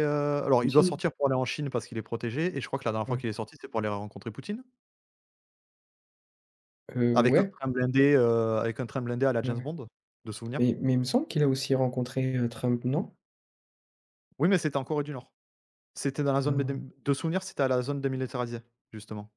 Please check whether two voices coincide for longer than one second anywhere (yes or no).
no